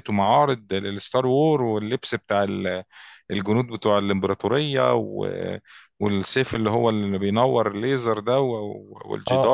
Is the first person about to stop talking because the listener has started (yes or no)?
yes